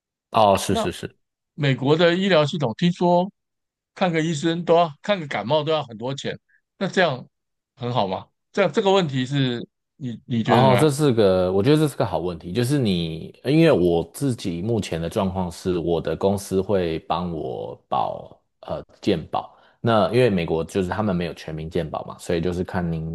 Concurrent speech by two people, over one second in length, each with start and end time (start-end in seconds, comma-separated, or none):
none